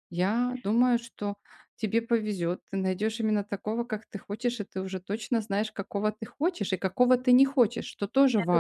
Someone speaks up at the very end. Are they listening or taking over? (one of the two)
taking over